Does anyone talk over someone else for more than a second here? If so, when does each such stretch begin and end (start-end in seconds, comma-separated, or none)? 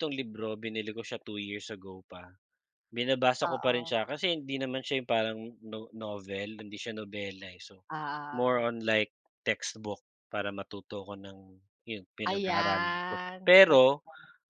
12.3-13.8